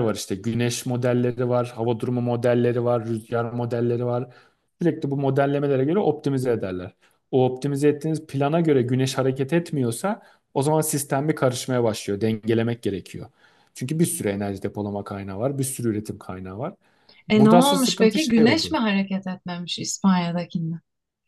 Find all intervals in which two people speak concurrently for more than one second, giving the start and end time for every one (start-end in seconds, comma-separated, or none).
17.3-18.8